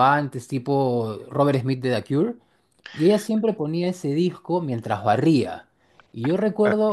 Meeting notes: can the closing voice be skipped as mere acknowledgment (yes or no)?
yes